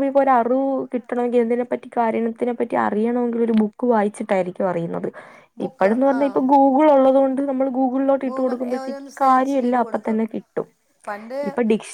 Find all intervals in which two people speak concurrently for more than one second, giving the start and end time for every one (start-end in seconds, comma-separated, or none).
8.3-10.2